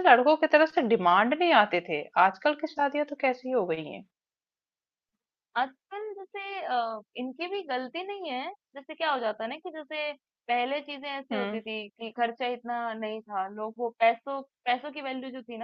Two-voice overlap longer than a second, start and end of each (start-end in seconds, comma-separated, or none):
none